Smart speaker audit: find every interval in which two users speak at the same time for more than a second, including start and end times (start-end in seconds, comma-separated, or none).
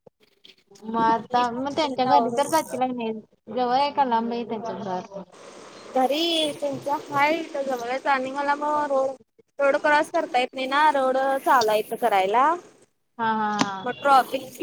1.1-2.4